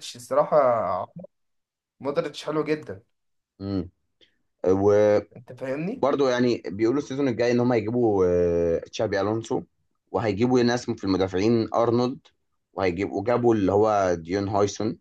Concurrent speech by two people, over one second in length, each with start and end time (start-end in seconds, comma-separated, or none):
none